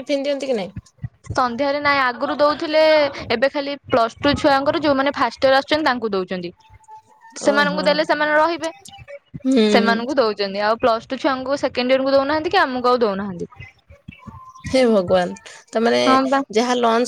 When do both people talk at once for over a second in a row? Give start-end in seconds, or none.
none